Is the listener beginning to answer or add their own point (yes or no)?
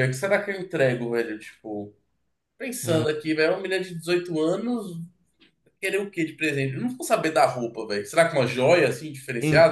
yes